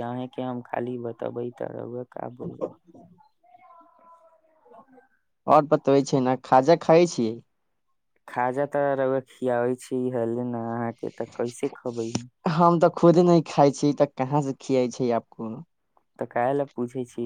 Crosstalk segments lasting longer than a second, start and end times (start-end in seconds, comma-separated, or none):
none